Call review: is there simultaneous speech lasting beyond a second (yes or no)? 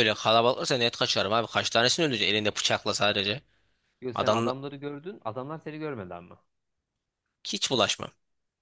no